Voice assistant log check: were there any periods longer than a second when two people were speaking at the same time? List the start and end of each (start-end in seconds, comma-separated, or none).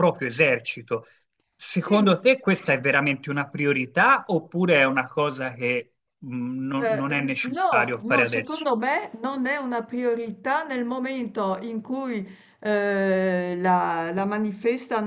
6.8-8.7